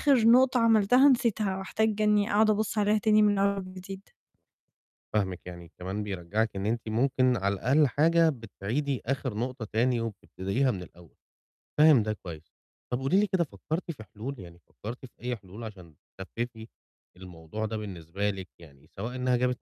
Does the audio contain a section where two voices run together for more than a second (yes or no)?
no